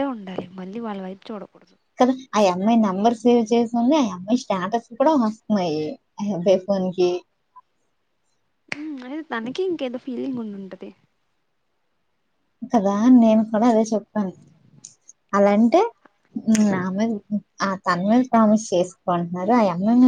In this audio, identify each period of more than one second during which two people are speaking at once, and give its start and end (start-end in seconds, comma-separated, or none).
none